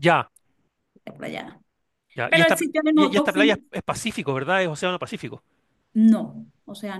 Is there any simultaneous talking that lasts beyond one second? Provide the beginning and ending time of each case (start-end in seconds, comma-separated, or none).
2.3-3.6